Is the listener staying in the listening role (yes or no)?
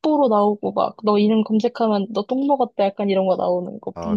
no